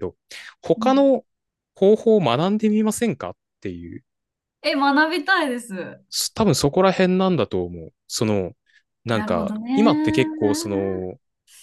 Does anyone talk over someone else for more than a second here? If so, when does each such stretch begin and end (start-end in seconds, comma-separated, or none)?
9.1-10.9